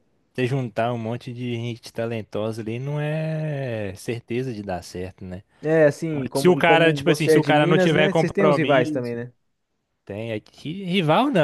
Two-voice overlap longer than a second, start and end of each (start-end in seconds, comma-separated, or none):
6.3-9.2